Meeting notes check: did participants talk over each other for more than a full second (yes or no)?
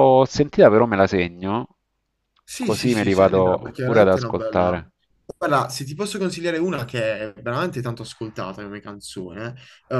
yes